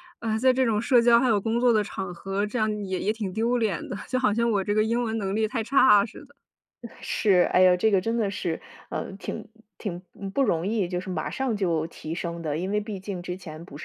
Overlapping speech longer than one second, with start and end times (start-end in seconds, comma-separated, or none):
none